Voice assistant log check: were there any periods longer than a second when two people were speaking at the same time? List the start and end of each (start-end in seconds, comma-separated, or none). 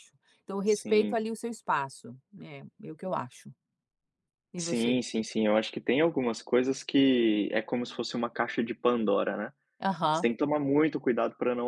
none